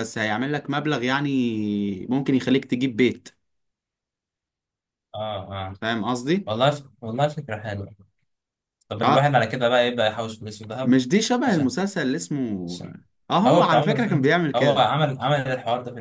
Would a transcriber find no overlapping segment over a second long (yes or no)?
no